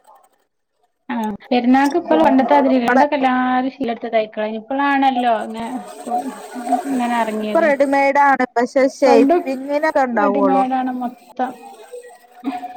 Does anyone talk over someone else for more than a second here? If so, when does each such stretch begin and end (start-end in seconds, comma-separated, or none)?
none